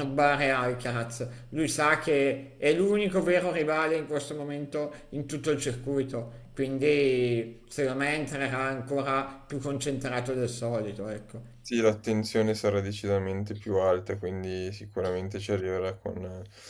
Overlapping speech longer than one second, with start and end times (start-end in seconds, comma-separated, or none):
none